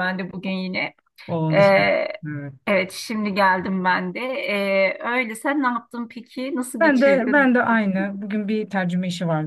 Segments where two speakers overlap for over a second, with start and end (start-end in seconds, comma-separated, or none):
6.8-8.1